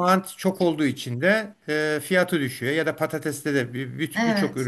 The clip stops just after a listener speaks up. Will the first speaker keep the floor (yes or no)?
yes